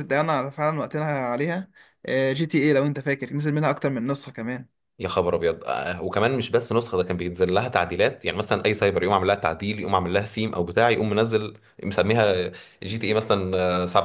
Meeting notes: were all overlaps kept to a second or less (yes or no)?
yes